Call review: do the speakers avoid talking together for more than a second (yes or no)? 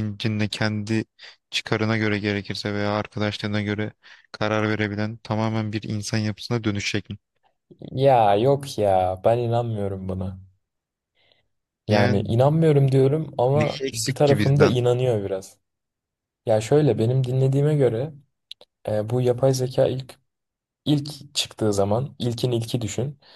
no